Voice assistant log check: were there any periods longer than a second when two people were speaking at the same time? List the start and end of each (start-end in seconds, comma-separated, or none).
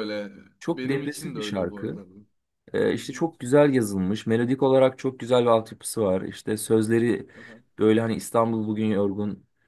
0.7-2.0